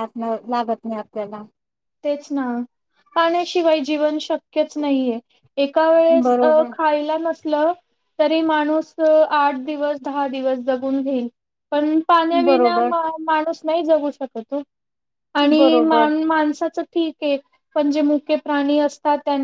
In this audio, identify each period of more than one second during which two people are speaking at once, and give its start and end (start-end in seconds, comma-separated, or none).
none